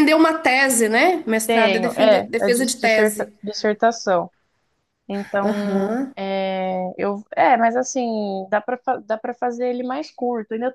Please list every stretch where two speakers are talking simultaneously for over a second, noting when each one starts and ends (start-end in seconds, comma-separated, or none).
1.5-3.3